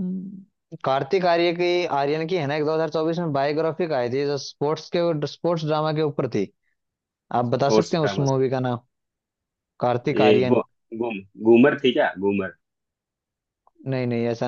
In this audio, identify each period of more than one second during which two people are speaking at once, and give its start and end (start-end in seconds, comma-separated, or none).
none